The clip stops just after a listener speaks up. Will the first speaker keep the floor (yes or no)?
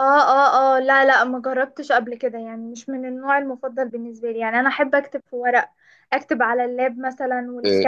no